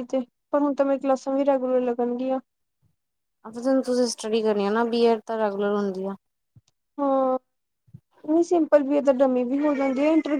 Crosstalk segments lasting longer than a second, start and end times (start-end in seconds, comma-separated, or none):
none